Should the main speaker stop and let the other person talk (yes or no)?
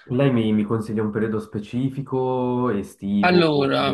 no